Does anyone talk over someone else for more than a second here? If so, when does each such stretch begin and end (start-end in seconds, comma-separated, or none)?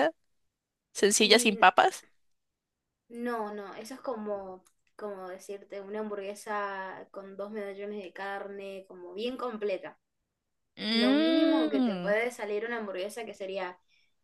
10.9-12.1